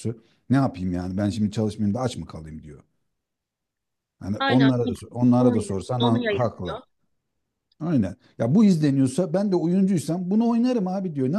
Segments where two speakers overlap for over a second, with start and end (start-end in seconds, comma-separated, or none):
5.4-6.8